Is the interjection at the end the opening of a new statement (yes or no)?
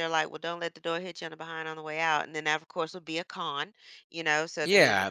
yes